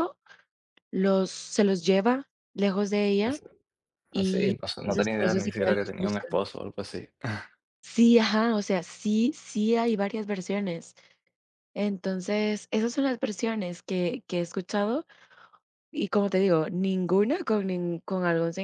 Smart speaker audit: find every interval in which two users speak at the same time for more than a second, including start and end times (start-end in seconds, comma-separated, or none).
4.1-6.3